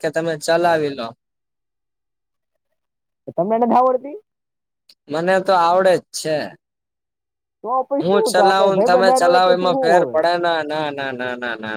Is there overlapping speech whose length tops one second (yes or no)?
yes